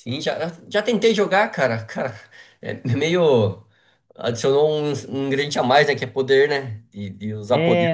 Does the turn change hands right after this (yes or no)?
yes